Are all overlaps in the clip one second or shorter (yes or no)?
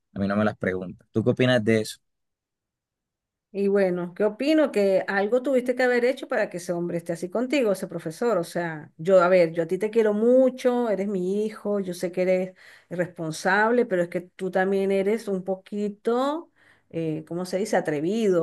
yes